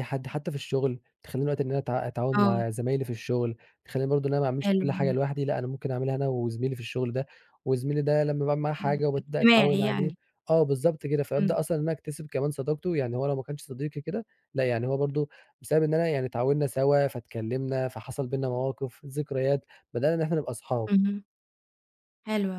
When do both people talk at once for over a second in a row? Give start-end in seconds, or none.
8.8-10.1